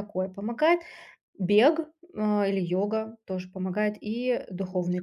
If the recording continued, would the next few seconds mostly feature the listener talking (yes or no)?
yes